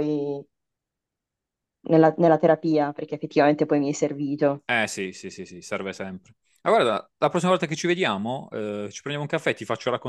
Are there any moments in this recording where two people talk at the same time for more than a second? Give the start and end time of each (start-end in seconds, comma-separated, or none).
none